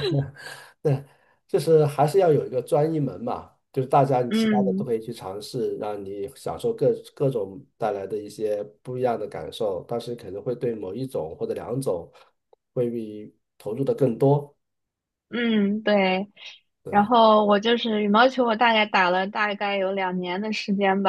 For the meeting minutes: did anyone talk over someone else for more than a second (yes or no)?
no